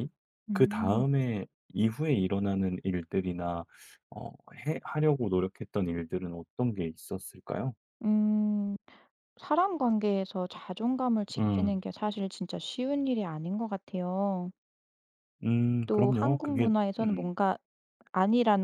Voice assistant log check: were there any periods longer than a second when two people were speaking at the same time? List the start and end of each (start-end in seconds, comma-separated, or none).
15.8-17.3